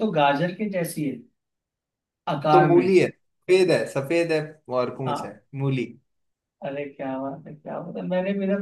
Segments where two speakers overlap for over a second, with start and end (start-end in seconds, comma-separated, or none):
none